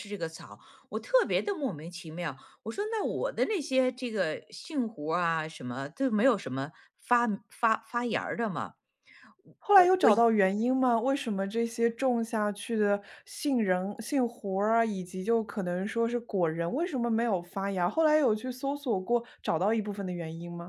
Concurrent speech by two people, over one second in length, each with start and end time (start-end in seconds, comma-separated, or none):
none